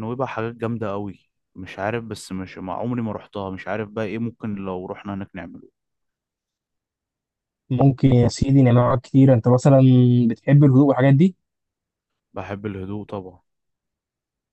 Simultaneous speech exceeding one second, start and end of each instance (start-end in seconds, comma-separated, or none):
none